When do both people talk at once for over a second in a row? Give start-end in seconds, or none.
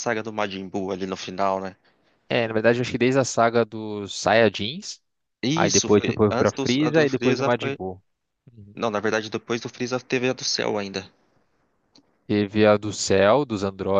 5.5-7.8